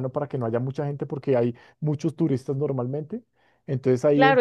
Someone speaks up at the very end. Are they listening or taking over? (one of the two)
taking over